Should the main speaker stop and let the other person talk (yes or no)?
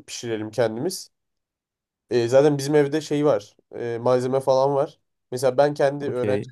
no